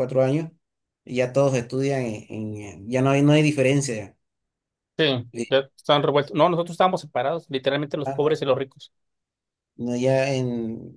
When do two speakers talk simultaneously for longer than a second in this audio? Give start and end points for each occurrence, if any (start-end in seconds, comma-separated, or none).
none